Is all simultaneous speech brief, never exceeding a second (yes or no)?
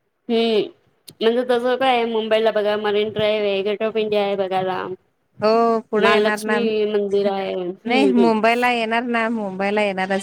no